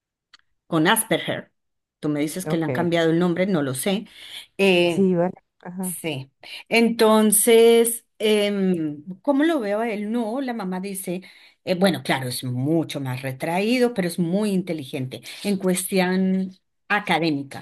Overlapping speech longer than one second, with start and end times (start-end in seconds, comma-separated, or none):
none